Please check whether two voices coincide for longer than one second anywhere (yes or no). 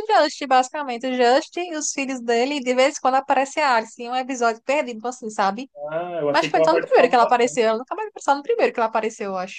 yes